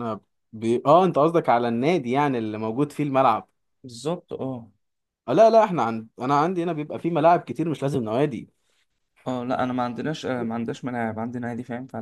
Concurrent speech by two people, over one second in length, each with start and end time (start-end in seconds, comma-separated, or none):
none